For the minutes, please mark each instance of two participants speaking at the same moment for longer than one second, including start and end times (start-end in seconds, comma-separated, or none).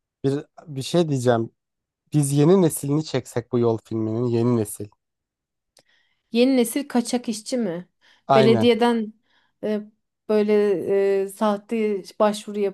none